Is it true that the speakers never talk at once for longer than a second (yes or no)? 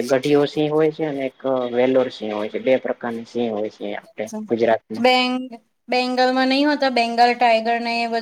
yes